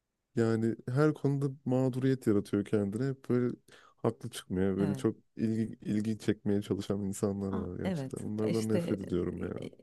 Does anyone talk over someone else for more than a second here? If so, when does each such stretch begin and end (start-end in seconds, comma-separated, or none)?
7.5-9.0